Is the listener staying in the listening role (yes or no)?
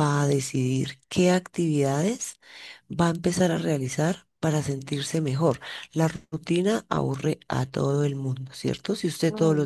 yes